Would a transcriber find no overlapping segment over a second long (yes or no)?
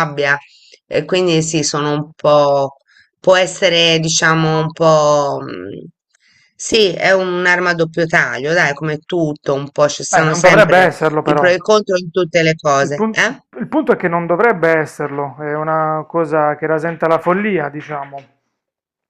no